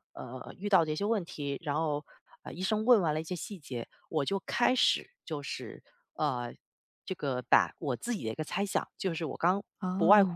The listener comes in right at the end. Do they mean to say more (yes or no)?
no